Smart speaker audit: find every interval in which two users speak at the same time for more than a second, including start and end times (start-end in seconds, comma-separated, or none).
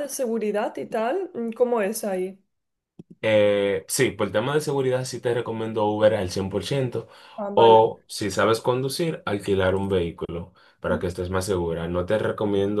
none